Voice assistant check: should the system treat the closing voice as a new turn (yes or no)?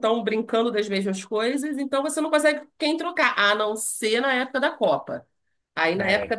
no